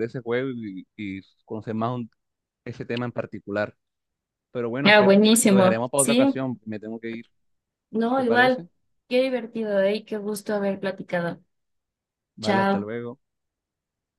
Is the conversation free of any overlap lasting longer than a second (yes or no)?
no